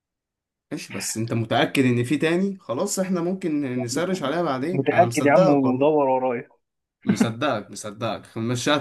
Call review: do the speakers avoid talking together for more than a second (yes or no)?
no